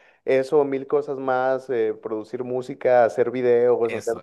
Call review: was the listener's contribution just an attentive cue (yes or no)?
no